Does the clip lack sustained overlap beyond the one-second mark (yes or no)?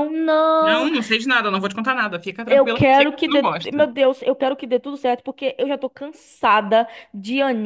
no